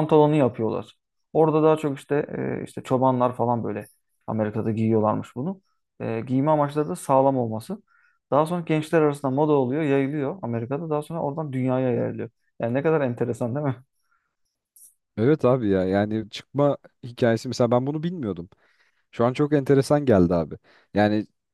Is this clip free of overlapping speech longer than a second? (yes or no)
yes